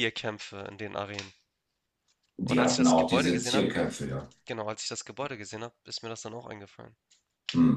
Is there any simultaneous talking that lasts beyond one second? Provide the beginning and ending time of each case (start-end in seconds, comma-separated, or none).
2.4-3.7